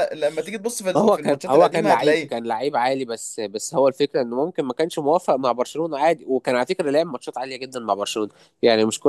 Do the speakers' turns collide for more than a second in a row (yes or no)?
yes